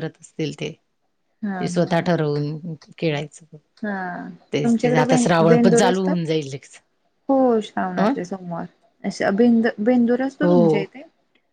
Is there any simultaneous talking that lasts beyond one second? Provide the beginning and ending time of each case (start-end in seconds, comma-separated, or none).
4.5-6.2